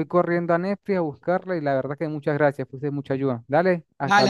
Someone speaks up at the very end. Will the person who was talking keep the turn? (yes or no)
no